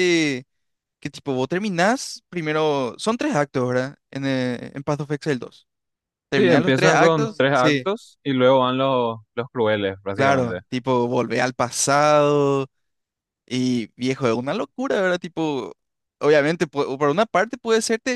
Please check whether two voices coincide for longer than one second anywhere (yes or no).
yes